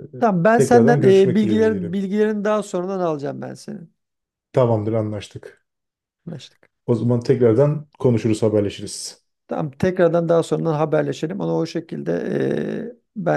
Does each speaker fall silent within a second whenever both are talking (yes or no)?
no